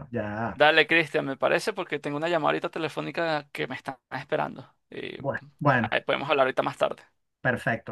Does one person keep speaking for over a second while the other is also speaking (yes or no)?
no